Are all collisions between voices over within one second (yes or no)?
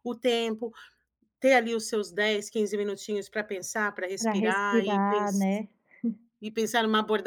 no